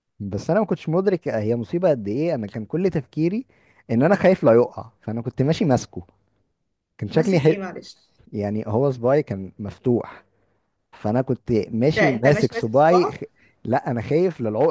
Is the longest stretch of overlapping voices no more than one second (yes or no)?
no